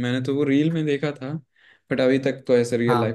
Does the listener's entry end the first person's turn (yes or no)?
no